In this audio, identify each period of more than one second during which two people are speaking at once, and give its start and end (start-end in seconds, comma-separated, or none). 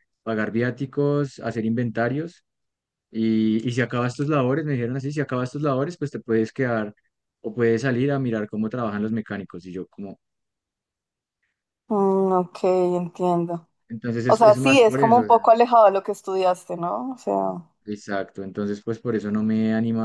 14.3-15.6